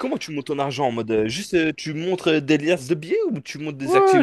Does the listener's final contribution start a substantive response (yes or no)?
yes